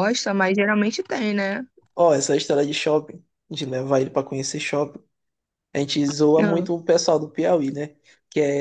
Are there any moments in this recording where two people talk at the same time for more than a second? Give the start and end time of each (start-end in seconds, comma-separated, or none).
none